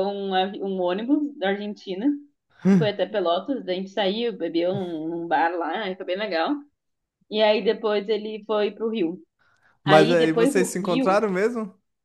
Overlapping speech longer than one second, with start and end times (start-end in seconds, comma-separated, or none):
9.8-11.3